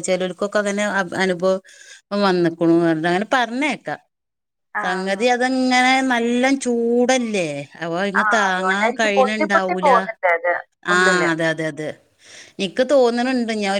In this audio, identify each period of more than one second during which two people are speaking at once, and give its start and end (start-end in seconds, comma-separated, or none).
8.2-9.9